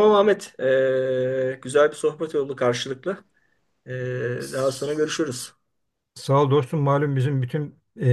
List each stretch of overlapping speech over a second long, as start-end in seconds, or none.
none